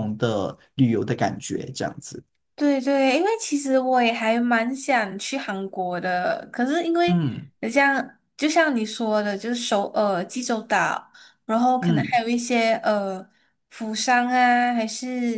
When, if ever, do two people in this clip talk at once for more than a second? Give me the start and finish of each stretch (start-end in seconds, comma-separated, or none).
none